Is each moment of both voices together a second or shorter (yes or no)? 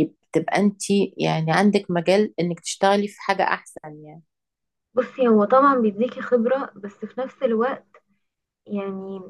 yes